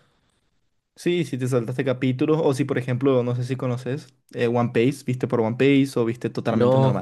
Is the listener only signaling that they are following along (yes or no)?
no